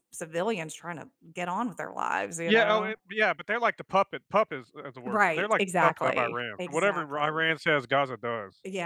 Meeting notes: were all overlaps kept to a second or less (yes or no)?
no